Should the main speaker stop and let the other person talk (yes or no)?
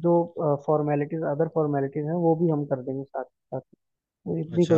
yes